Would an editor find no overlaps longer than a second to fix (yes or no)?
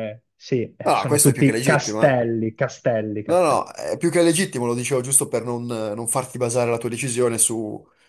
no